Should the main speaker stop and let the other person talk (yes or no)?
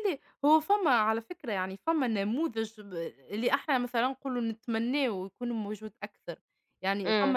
yes